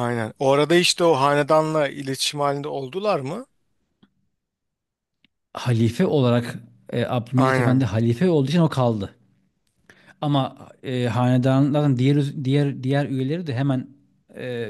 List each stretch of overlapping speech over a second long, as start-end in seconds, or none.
none